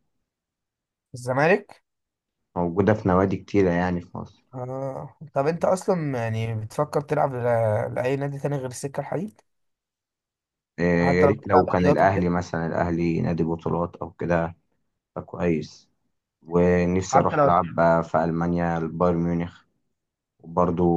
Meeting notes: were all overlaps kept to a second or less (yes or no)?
no